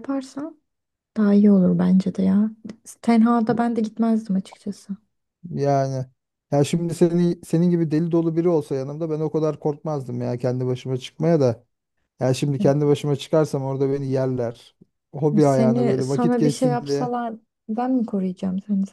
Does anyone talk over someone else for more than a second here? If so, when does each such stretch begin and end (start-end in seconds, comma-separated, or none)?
15.3-17.1